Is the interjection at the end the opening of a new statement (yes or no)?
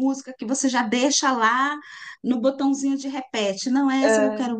no